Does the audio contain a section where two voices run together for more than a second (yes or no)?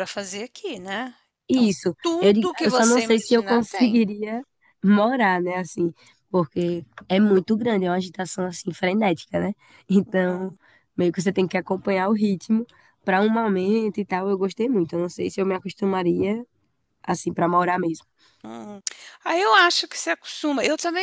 yes